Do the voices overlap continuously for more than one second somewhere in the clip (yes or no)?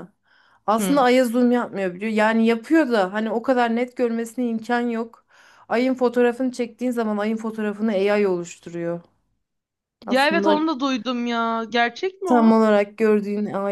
no